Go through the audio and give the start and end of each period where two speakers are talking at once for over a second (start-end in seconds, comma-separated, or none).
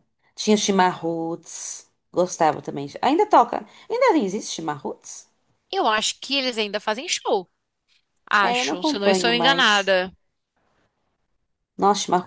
8.4-9.9